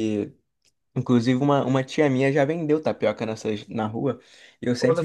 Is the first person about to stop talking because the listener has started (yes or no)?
no